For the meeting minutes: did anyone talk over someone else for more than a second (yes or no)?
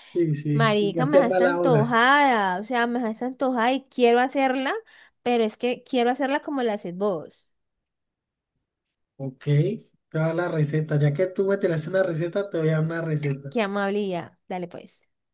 yes